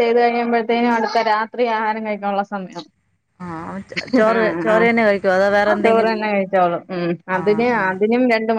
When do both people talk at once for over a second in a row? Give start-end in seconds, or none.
4.3-6.1